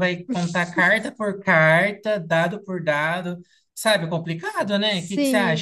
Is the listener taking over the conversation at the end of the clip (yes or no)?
yes